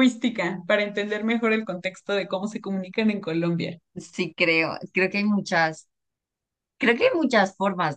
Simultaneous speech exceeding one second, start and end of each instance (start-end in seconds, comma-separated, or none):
none